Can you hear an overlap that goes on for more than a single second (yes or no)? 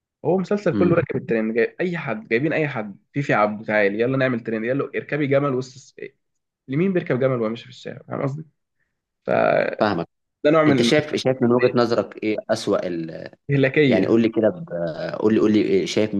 no